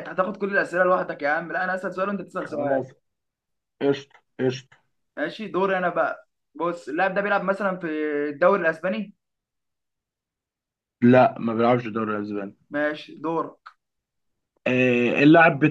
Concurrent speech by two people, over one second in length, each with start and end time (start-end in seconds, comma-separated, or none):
none